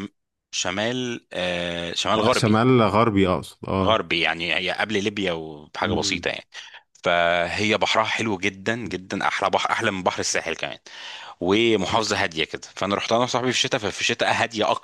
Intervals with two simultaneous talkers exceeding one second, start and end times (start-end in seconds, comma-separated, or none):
none